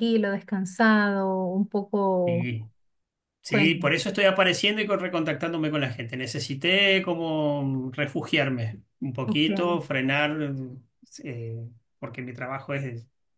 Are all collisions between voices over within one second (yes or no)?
yes